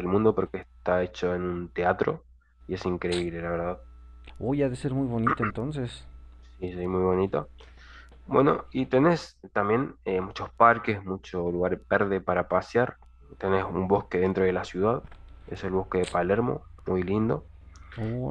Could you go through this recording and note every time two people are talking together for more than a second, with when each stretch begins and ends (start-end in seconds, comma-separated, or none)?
none